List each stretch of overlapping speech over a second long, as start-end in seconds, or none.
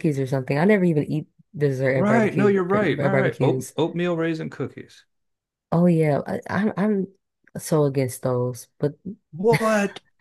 1.9-3.8